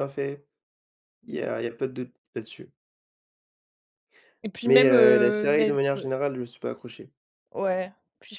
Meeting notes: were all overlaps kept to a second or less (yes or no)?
no